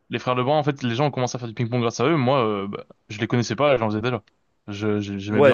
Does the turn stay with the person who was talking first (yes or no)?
no